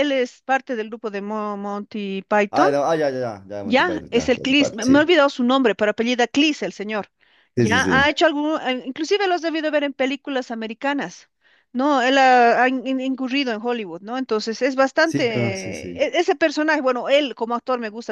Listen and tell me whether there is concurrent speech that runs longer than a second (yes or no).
yes